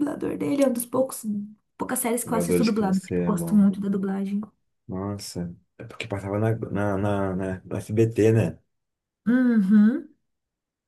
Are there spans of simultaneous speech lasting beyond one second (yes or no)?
yes